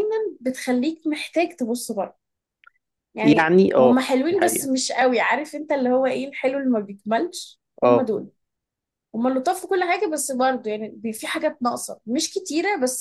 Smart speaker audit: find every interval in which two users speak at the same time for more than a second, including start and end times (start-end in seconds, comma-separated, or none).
3.2-4.7